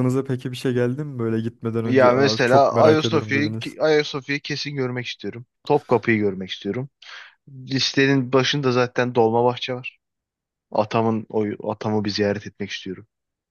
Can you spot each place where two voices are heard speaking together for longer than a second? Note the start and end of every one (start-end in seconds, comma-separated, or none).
1.9-3.8